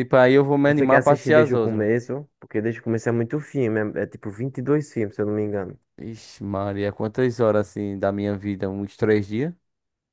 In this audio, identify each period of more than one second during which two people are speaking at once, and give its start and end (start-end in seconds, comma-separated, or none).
0.7-1.9